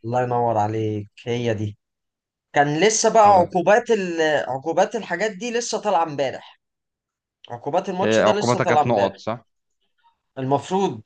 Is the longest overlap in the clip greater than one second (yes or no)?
yes